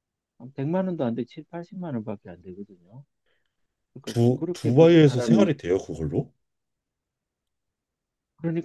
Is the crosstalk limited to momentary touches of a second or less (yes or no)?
no